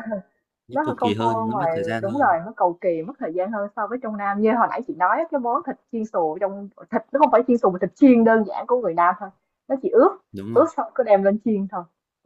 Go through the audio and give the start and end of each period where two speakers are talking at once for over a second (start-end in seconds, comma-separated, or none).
0.7-2.4